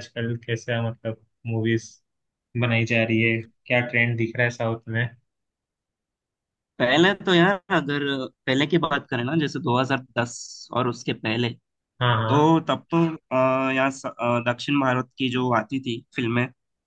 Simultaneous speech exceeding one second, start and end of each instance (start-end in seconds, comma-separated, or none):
none